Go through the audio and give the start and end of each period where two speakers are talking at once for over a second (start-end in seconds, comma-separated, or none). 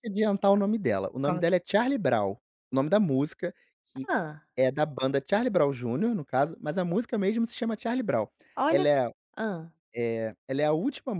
none